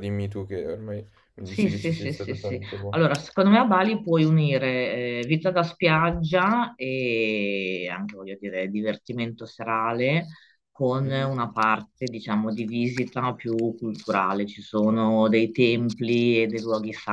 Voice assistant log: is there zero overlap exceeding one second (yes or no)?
no